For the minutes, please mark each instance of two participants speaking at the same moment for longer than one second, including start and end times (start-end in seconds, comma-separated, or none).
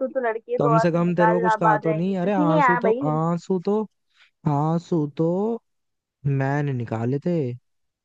0.6-3.2